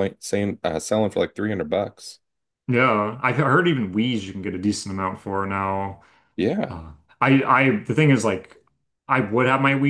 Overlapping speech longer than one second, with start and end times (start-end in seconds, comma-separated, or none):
none